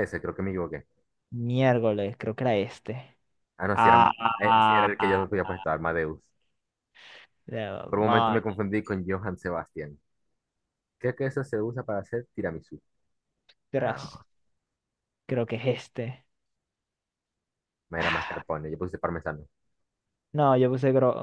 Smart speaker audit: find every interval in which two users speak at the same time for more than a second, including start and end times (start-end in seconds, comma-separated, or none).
3.7-5.2